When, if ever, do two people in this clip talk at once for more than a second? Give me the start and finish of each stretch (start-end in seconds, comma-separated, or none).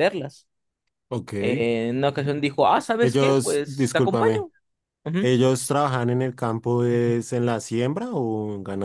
3.0-4.5